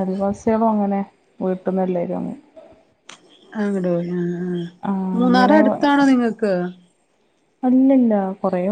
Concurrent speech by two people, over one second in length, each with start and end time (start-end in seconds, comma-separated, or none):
none